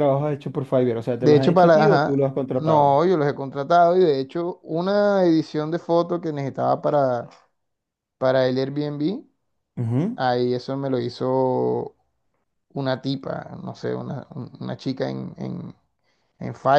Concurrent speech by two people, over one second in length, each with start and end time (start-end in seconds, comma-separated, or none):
1.2-3.0